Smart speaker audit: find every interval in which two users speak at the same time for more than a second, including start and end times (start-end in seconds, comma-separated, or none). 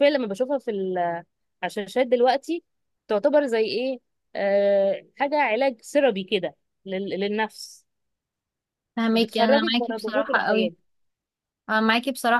9.1-10.7